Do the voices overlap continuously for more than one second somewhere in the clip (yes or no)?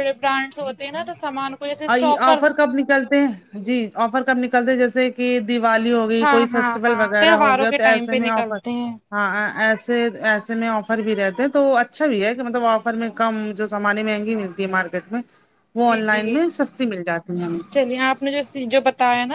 yes